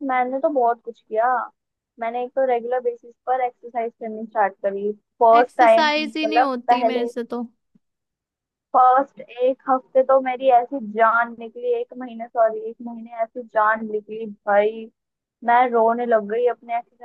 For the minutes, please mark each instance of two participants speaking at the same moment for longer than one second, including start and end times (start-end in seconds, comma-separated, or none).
5.4-7.1